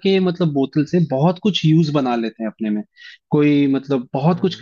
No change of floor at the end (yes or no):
yes